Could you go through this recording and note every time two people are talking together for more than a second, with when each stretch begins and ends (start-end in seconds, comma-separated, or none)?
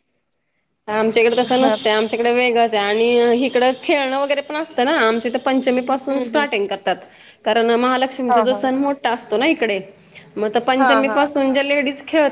none